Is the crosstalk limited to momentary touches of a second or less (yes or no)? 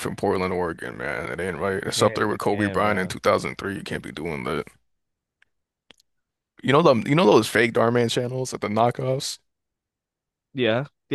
no